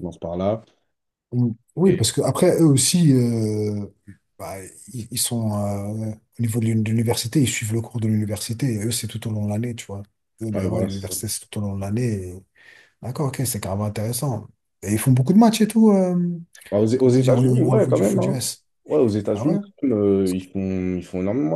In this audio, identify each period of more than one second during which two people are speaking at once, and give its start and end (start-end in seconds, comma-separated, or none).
17.0-18.4